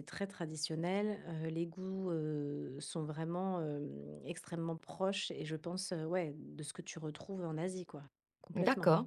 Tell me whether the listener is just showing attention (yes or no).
no